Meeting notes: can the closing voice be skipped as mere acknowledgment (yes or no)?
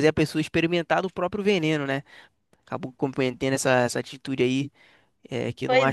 no